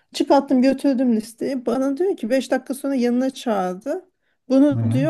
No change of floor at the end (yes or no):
yes